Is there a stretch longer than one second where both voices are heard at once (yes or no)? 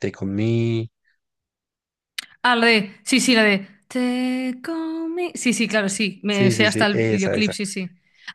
yes